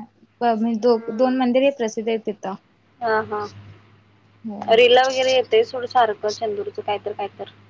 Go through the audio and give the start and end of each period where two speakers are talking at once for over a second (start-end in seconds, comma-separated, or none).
none